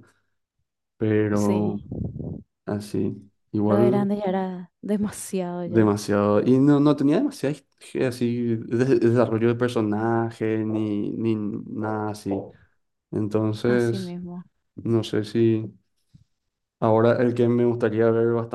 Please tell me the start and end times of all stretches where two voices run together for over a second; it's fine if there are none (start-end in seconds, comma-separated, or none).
none